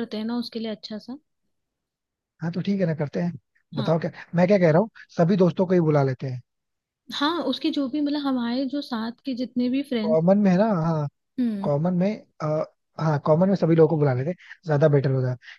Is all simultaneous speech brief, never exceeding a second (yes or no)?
yes